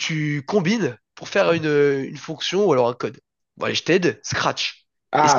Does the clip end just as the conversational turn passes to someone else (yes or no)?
yes